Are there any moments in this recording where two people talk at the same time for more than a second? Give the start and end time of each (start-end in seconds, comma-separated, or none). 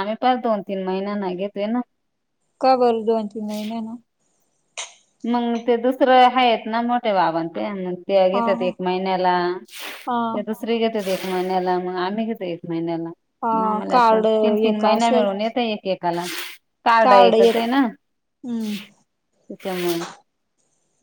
13.9-15.2